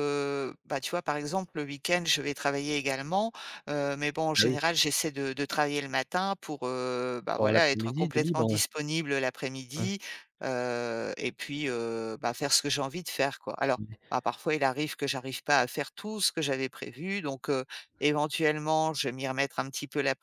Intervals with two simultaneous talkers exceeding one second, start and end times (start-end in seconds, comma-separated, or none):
7.3-8.6